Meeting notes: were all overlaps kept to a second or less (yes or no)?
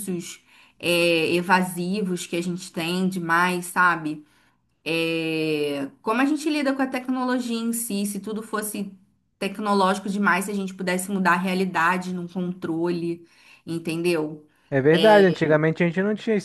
yes